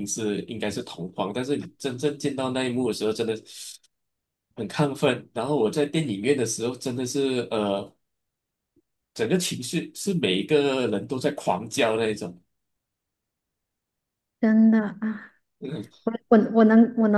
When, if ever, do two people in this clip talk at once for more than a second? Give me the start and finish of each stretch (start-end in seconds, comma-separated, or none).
none